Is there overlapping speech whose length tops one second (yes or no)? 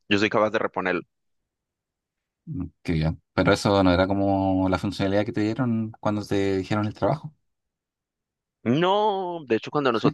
no